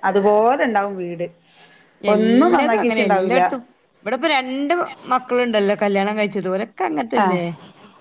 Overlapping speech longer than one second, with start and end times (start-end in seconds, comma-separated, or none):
2.1-3.4